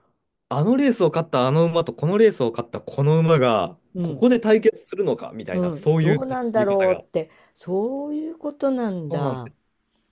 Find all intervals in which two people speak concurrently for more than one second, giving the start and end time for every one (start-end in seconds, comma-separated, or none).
5.5-7.0